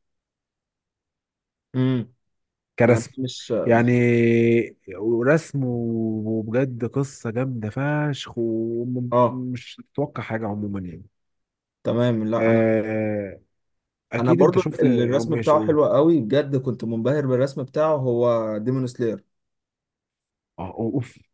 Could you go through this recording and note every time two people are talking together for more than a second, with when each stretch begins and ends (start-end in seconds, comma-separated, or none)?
14.2-15.6